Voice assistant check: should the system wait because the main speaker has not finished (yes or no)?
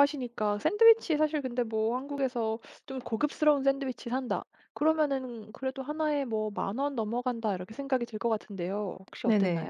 no